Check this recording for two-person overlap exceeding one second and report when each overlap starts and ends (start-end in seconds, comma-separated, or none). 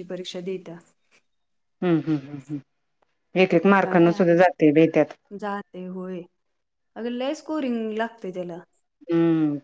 none